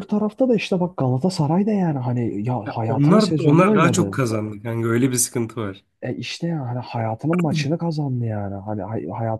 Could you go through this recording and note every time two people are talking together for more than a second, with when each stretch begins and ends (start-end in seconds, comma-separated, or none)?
2.7-4.1